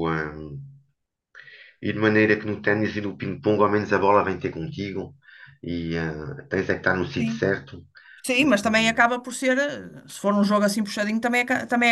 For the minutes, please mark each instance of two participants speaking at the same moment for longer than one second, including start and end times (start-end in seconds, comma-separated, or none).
none